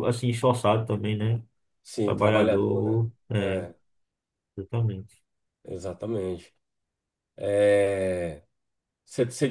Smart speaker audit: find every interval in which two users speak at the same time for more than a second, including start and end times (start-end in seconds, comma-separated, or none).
2.0-3.6